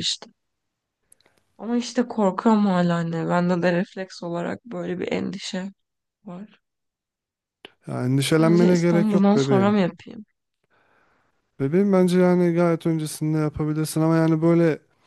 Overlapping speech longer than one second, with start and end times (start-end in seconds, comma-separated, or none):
8.2-9.8